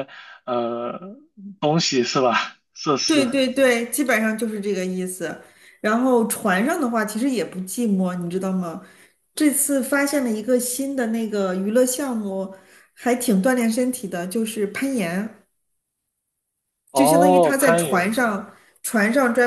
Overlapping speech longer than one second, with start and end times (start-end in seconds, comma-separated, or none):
16.9-18.2